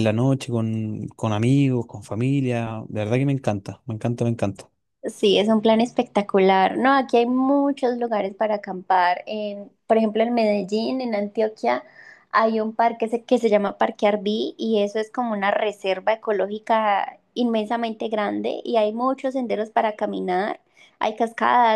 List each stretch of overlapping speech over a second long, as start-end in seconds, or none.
none